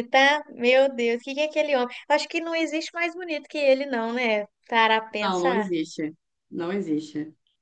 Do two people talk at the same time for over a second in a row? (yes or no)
no